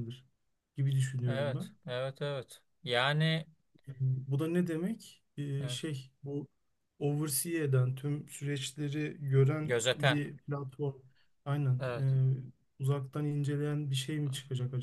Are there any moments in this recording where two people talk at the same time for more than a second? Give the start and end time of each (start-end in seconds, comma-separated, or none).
none